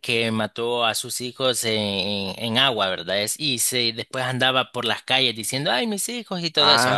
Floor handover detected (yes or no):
yes